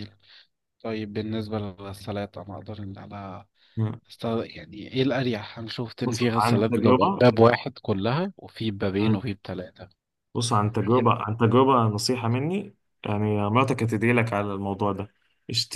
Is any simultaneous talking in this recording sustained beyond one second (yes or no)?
yes